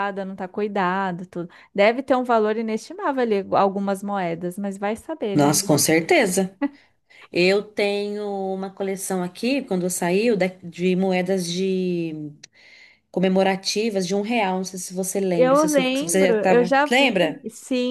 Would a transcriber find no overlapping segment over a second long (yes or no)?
no